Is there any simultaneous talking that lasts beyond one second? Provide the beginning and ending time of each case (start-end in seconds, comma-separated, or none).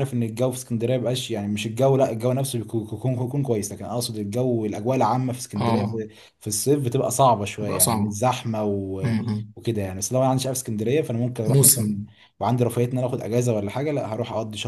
none